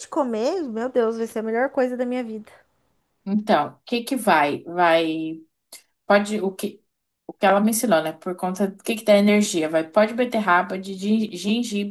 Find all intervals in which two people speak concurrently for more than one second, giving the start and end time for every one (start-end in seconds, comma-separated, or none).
none